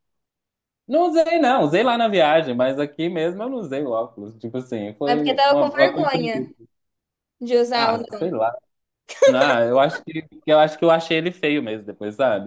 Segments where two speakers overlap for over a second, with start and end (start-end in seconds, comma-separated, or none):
5.1-6.5